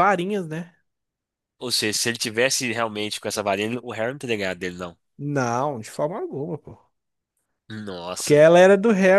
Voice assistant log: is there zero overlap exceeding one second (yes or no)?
yes